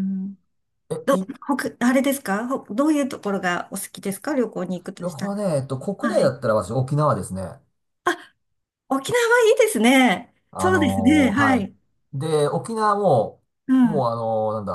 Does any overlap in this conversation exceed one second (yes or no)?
yes